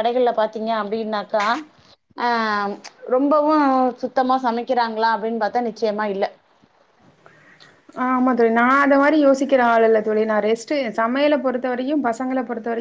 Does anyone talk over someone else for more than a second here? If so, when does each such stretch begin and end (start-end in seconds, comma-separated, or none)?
none